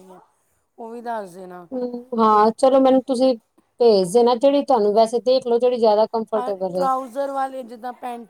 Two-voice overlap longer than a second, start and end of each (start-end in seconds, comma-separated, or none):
none